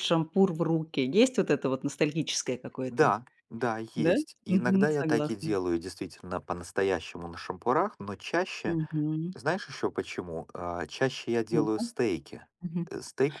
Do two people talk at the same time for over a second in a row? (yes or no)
yes